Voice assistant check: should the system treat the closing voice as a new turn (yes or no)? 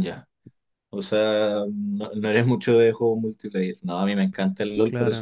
no